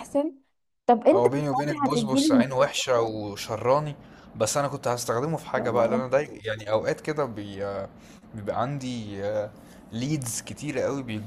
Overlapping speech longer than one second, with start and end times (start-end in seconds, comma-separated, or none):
1.1-2.5